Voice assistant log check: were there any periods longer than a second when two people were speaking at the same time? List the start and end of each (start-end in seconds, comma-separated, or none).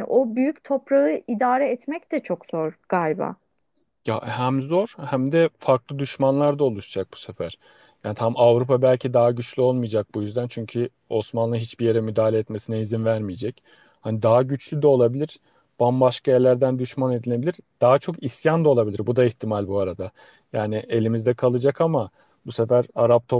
none